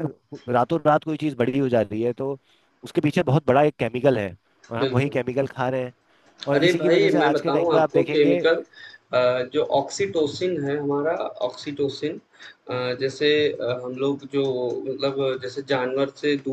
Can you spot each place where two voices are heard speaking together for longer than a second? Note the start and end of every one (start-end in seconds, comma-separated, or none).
6.5-8.4